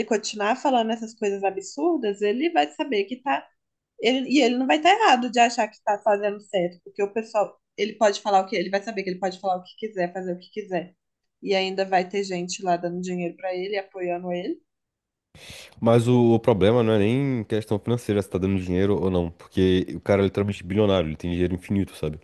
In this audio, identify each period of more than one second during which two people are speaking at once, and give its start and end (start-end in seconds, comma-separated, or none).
none